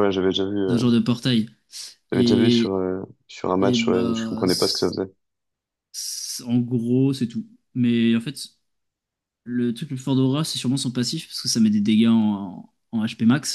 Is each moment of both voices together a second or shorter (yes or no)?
no